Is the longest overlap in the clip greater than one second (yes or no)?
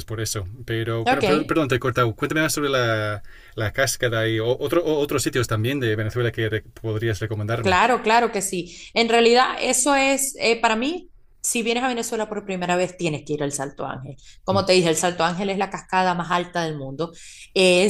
no